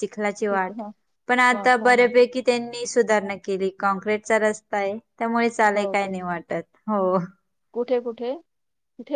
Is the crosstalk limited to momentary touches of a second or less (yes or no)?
yes